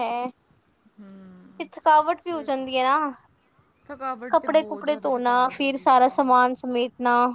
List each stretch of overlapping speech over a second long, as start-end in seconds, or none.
4.3-6.3